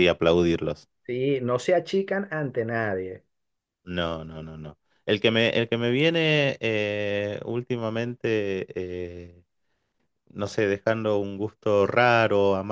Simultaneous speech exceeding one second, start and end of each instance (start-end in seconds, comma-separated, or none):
none